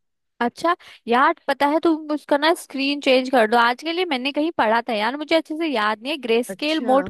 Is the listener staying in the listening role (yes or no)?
yes